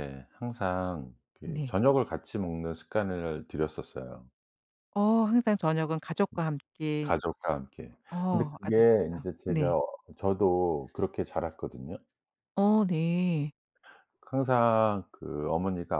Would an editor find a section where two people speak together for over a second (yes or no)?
yes